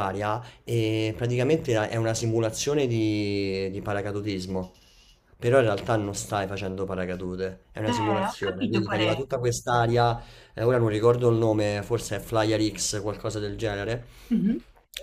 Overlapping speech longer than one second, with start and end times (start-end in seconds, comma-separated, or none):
7.8-9.2